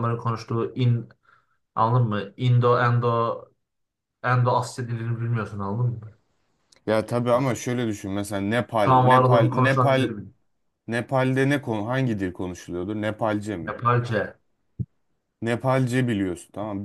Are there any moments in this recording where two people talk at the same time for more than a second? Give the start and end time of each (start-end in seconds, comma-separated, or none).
8.8-10.1